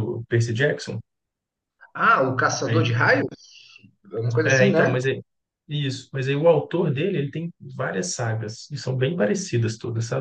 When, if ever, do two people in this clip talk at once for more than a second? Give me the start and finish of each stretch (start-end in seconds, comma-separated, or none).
none